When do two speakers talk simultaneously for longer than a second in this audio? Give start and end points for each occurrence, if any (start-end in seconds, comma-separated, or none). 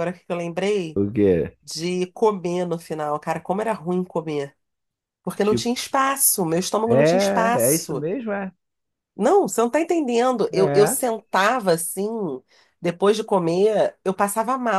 6.9-8.1